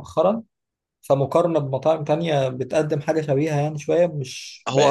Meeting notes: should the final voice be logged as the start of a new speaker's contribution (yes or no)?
no